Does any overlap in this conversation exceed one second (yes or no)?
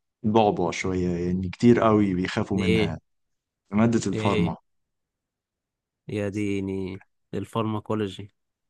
no